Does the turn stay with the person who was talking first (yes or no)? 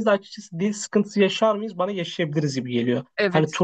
yes